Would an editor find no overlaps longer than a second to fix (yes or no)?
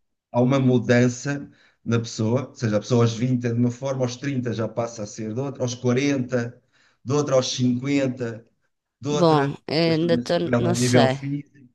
no